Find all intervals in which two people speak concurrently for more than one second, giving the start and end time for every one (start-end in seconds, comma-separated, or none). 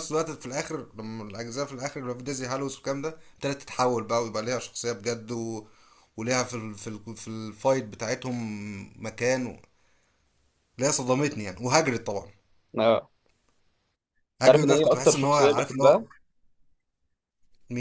14.4-15.9